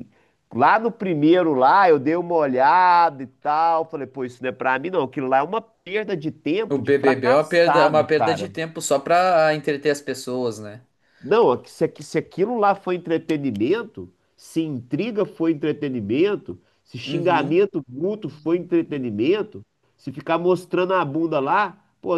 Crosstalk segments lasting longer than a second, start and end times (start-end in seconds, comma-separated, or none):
6.7-8.5